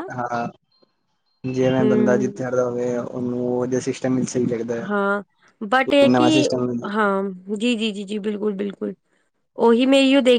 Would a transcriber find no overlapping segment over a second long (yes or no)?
yes